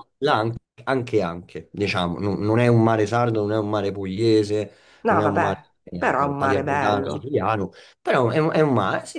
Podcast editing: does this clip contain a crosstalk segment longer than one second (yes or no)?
yes